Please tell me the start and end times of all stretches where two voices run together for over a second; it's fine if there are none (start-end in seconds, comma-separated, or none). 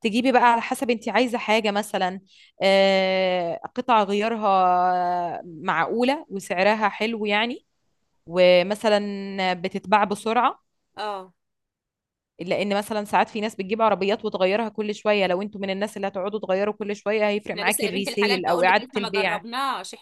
17.5-19.4